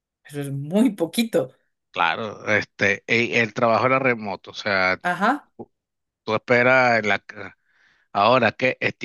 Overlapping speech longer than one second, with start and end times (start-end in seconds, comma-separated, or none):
none